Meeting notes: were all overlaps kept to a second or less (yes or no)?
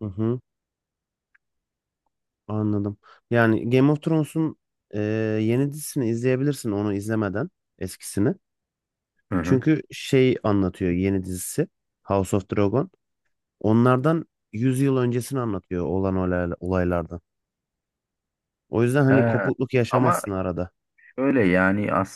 yes